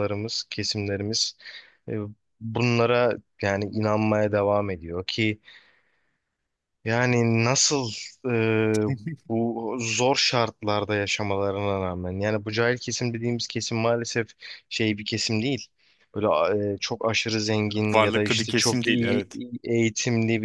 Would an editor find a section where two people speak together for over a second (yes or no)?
yes